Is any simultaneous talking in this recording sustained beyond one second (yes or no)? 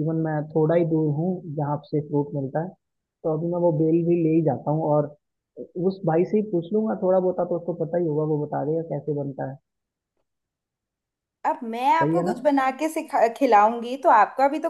no